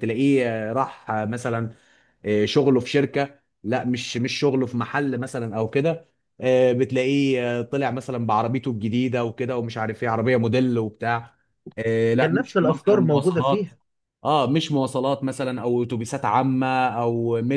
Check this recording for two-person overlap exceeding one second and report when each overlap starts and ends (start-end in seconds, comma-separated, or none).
12.2-13.7